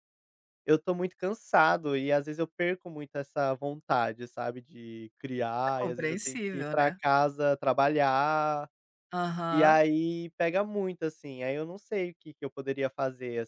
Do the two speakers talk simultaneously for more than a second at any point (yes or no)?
yes